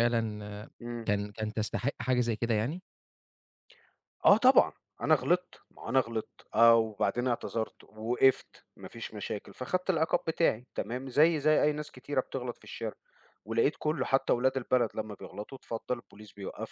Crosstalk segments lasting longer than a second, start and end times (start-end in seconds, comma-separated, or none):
none